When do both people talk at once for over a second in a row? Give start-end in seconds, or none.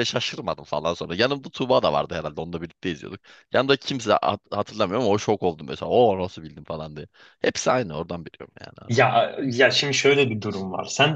none